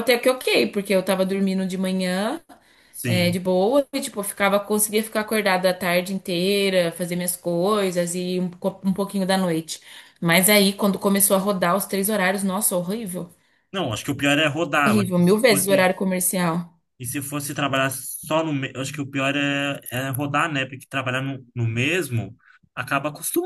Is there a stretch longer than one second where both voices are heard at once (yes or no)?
yes